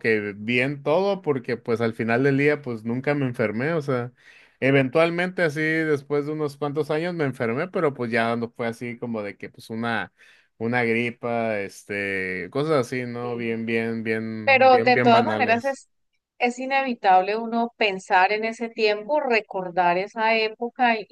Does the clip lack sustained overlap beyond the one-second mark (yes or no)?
no